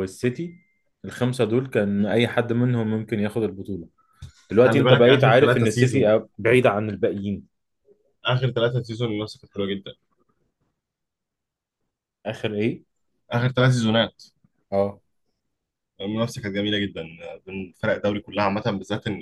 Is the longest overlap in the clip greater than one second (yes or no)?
yes